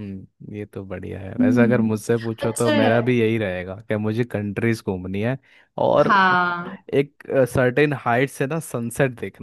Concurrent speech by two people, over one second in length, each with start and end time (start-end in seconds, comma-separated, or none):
1.4-3.1